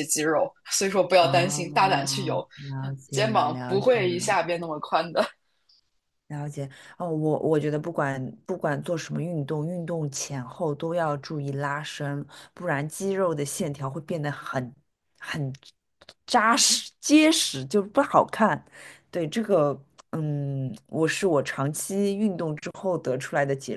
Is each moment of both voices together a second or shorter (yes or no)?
no